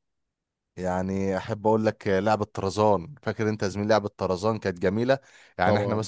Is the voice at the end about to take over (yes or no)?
no